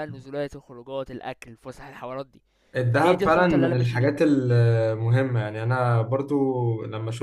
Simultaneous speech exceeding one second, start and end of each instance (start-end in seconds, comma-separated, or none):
2.9-4.1